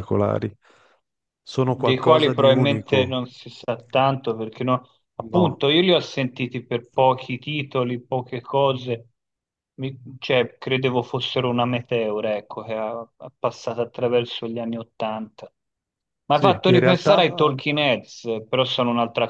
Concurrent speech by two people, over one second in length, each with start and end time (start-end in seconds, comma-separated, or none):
1.6-3.2, 16.3-17.6